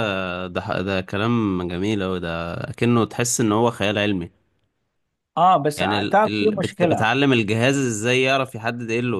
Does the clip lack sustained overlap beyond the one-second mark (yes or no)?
no